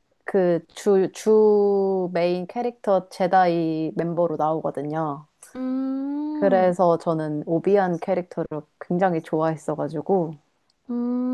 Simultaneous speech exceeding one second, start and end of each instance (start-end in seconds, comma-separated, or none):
none